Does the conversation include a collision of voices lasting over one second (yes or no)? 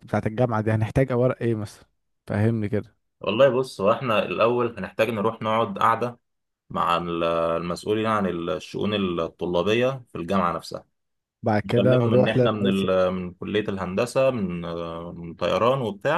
yes